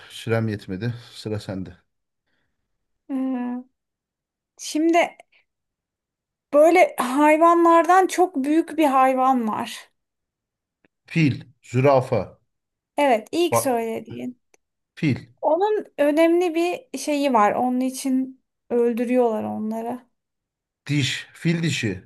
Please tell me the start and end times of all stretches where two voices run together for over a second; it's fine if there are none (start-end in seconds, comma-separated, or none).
none